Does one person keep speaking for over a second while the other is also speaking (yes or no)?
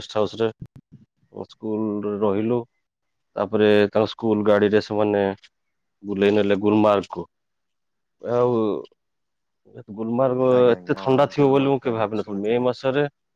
yes